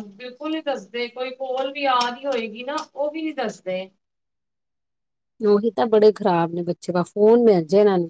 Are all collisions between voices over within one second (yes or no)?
yes